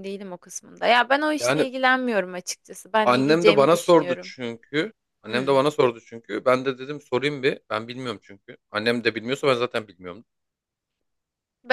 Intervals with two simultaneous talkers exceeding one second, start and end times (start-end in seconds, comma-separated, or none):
3.0-4.3